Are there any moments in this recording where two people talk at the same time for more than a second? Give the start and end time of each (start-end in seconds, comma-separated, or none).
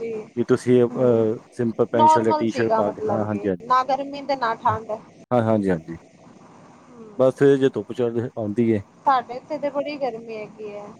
1.9-3.6